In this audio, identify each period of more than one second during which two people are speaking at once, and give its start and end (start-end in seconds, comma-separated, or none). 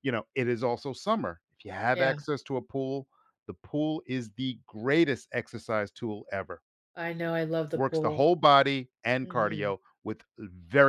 none